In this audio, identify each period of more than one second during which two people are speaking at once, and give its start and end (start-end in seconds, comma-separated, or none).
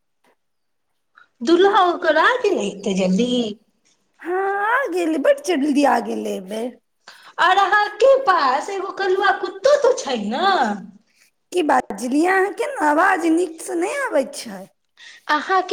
none